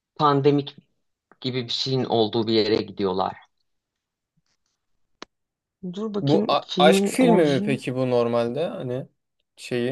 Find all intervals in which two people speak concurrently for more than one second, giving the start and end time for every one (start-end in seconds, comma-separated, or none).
6.2-7.8